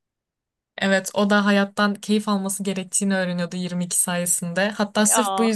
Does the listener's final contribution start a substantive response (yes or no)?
no